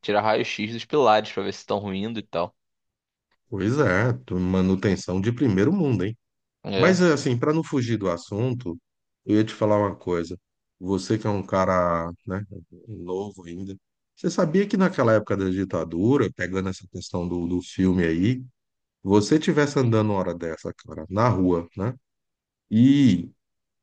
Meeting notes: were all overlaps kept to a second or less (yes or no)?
yes